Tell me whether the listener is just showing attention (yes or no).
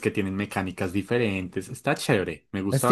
no